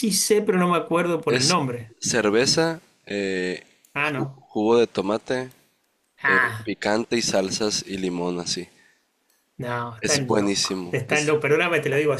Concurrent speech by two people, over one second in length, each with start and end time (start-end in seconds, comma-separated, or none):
10.0-11.4